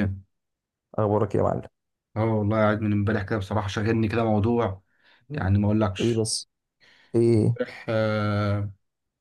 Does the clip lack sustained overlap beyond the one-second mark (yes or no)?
yes